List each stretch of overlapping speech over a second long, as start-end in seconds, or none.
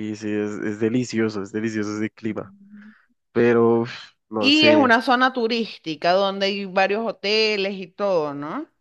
none